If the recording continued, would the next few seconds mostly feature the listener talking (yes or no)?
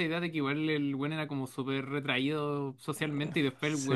no